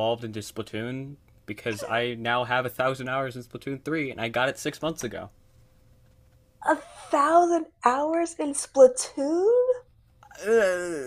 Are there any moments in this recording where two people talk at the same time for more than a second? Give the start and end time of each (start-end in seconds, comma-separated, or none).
none